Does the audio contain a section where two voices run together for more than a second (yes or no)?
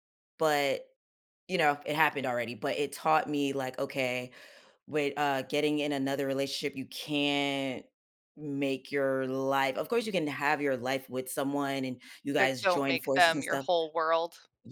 yes